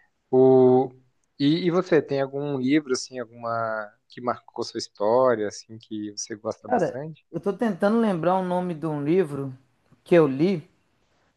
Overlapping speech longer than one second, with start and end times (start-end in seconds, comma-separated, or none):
none